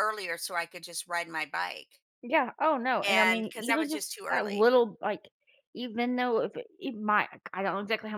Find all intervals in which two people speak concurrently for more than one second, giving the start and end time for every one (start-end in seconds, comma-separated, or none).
3.0-4.7